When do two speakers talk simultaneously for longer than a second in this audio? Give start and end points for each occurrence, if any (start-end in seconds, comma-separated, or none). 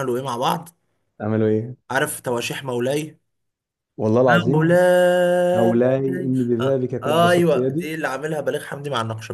6.6-7.9